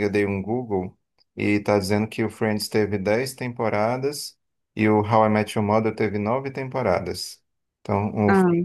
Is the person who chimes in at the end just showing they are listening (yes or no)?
yes